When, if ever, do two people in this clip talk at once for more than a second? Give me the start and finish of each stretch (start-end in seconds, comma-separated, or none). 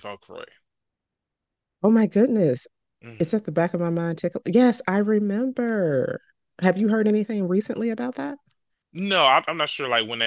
none